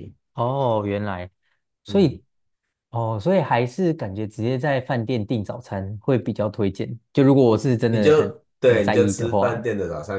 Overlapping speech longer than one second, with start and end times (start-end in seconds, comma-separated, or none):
7.9-9.7